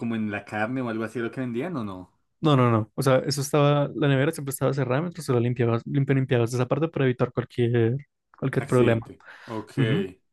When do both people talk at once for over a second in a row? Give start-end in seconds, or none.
none